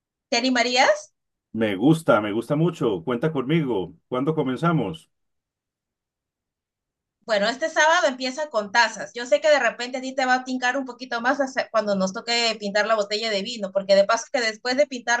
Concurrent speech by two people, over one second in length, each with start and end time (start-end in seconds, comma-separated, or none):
none